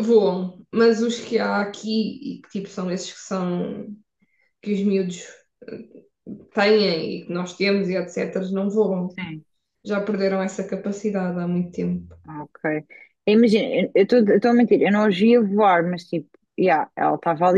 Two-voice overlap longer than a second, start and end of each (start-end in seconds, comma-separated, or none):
none